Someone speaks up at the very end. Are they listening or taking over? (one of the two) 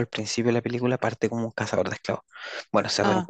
listening